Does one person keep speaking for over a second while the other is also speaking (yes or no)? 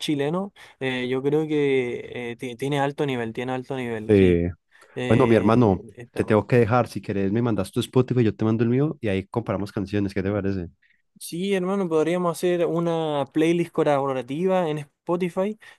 yes